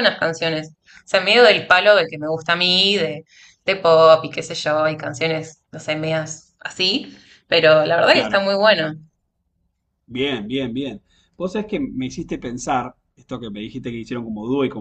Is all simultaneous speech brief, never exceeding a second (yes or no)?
yes